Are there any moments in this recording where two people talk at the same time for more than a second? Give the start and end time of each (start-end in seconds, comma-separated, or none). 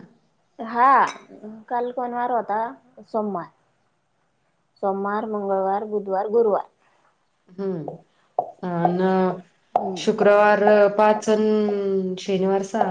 none